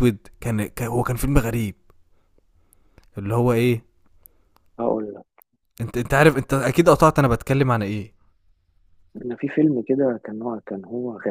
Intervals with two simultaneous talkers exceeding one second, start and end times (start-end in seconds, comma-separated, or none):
none